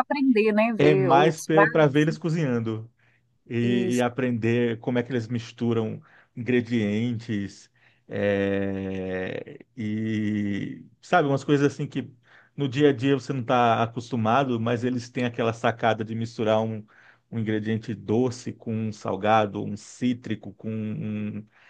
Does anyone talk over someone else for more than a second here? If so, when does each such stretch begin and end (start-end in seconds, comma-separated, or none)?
0.8-2.0